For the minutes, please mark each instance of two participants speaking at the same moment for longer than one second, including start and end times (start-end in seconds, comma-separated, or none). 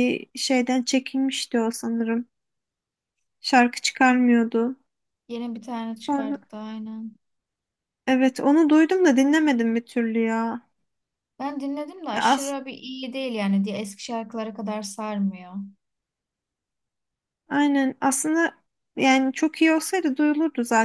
none